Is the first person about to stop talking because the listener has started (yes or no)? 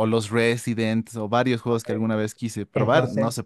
yes